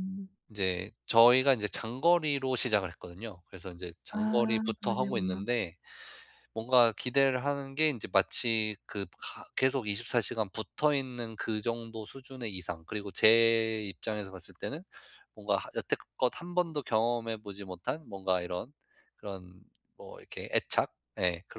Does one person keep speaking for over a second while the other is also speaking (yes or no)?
yes